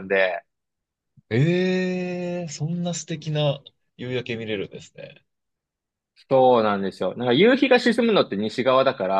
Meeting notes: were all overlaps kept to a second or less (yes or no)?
yes